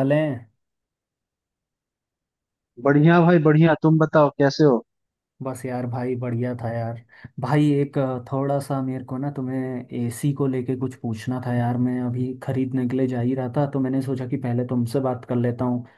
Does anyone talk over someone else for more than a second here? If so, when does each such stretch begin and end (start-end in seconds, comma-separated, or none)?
none